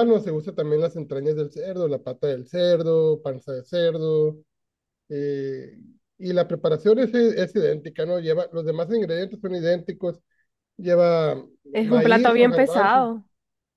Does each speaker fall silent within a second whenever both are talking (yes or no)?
no